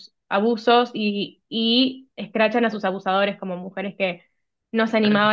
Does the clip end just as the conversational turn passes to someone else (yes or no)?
no